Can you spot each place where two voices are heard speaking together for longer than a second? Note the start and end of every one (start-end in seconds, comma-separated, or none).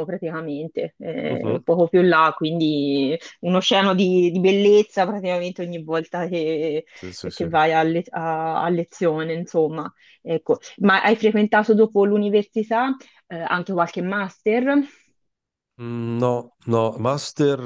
none